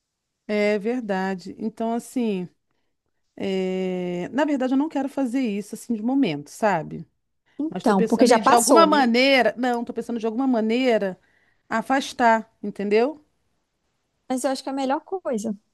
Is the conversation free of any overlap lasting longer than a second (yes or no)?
no